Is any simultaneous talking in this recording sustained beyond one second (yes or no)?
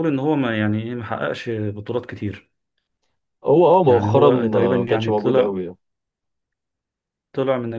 yes